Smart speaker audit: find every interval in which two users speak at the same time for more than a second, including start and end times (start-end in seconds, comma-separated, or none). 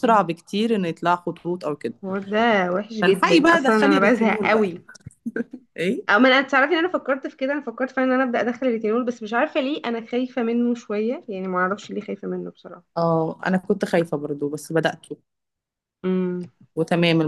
3.0-4.7